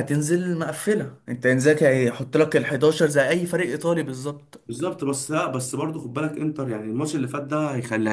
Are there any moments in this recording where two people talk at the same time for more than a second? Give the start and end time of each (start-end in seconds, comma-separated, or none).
none